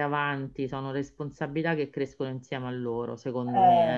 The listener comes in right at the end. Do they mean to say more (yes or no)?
yes